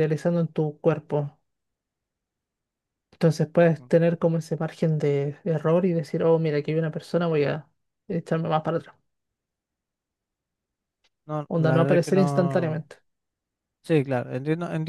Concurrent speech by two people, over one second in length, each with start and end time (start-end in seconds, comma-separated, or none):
11.5-12.8